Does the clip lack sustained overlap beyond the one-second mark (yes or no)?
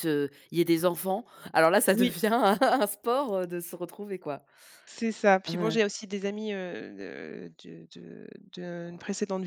yes